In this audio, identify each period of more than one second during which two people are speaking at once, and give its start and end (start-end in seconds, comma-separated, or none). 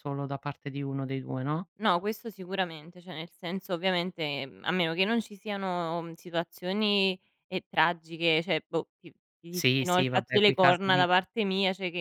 9.5-11.1